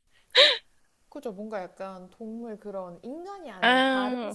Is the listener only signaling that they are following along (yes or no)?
yes